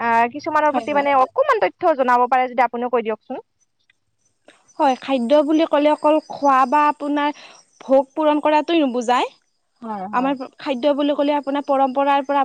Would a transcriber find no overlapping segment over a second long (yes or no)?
yes